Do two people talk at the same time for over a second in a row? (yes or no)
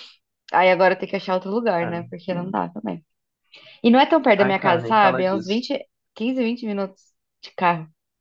yes